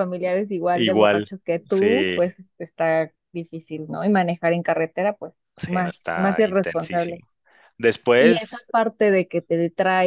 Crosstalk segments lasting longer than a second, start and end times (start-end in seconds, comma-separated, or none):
0.7-2.2, 5.6-7.2